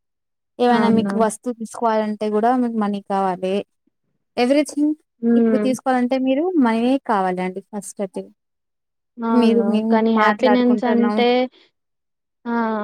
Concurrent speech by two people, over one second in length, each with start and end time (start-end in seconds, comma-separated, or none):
9.4-11.2